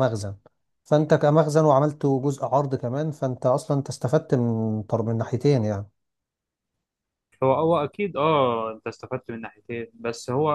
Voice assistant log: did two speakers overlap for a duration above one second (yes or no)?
no